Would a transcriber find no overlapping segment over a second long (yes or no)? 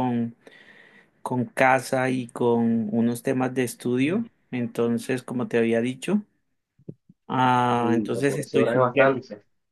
no